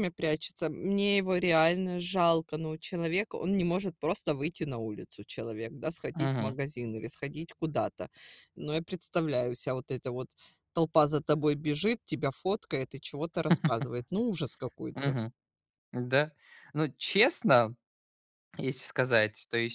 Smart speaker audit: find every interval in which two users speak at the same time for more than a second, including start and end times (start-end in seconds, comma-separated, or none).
none